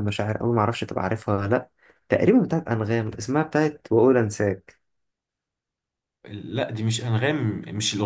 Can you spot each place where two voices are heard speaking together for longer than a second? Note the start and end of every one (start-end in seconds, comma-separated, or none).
none